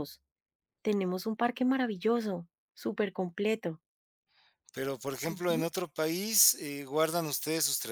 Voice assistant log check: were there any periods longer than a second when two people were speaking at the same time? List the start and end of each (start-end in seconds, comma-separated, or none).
none